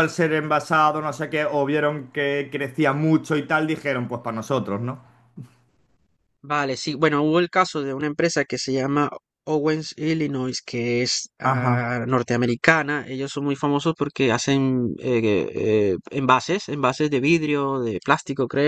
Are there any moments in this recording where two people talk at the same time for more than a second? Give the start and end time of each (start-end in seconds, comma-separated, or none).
none